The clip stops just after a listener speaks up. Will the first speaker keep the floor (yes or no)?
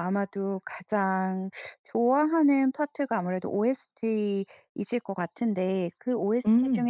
yes